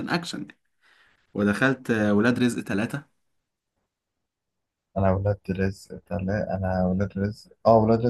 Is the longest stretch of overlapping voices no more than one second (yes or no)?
yes